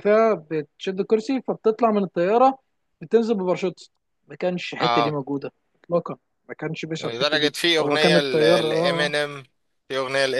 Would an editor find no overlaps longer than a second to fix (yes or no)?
no